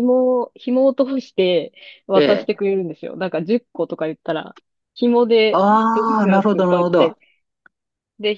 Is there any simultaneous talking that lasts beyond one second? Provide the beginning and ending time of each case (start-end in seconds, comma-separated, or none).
5.5-7.1